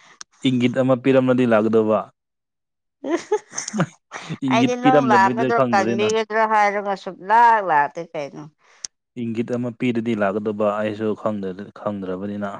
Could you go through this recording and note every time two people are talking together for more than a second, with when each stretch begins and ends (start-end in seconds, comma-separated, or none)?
4.5-6.1